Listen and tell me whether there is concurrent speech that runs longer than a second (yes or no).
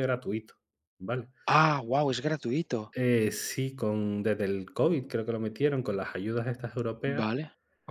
no